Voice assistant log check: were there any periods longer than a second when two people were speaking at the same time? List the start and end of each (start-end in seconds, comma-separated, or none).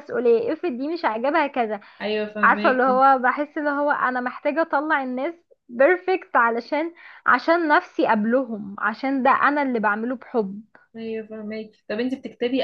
none